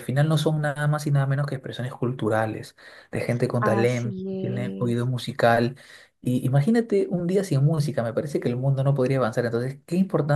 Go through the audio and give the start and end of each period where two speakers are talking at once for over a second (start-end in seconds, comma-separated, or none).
3.6-5.1